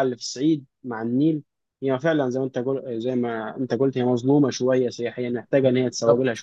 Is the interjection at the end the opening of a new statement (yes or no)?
yes